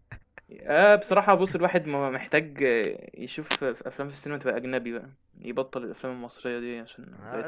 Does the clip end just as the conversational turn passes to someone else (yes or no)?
yes